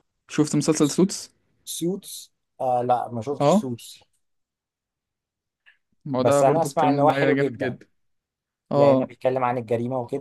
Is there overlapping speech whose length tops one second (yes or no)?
yes